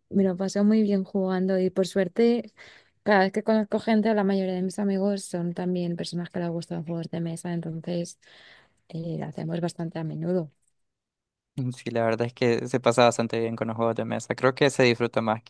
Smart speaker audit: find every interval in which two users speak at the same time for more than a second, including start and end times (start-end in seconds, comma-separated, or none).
none